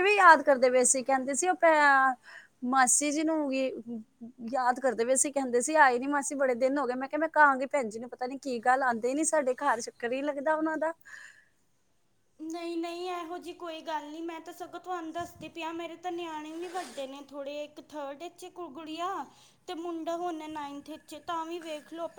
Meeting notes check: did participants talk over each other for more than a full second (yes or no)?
no